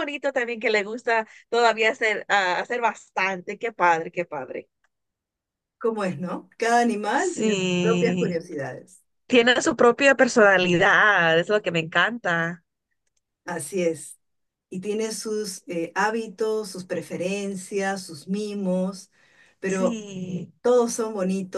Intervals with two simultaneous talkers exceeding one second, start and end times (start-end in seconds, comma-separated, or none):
7.2-8.4